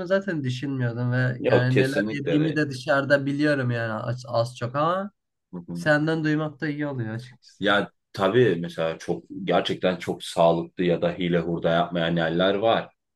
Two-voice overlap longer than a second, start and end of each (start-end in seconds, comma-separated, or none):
1.4-2.6